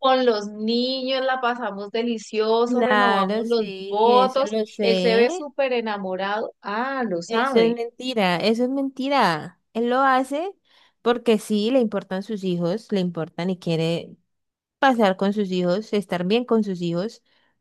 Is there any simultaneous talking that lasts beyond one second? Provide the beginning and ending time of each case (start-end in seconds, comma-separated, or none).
2.7-5.3